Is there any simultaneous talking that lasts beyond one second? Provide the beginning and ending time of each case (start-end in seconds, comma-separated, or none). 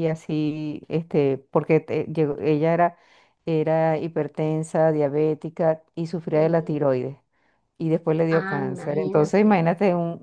8.3-9.7